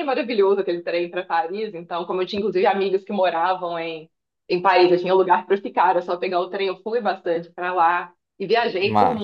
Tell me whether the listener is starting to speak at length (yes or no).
no